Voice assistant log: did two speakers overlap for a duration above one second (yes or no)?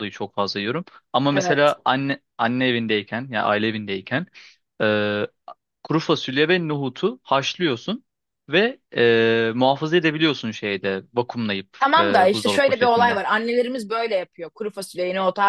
yes